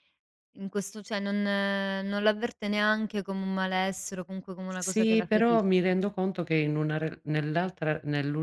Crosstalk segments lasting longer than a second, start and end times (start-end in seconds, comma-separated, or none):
4.7-6.0